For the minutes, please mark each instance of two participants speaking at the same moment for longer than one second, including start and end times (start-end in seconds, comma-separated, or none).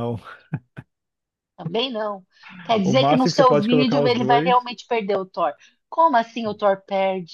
2.8-4.7